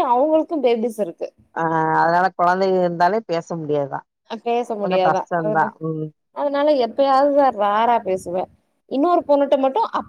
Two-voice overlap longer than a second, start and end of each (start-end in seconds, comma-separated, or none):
none